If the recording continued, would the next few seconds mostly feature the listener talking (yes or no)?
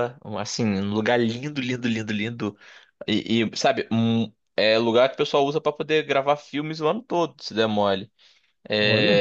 no